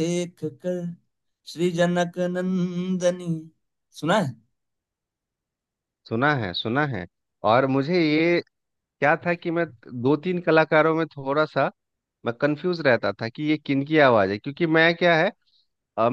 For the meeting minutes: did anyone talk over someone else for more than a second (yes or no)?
no